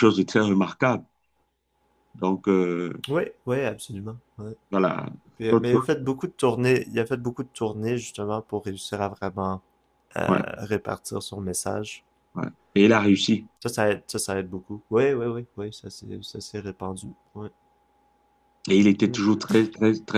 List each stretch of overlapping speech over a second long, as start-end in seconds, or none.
none